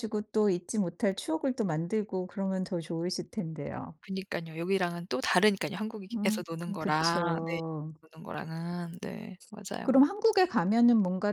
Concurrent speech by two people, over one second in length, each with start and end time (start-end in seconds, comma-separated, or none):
6.1-7.6